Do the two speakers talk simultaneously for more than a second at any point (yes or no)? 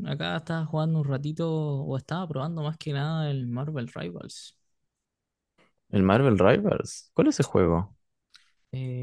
no